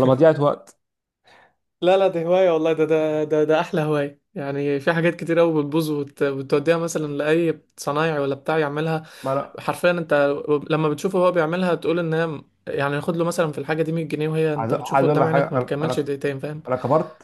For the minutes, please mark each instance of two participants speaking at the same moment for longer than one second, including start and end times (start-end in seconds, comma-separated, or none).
14.6-16.1